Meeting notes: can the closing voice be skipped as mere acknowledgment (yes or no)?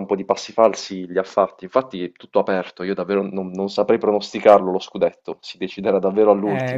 no